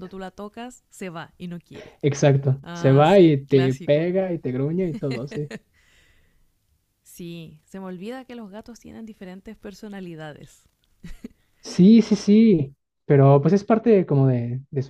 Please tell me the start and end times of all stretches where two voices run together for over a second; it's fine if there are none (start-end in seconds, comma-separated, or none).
2.6-4.1